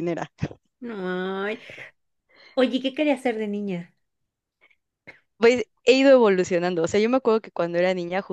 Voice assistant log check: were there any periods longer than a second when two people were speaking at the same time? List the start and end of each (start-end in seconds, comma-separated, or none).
none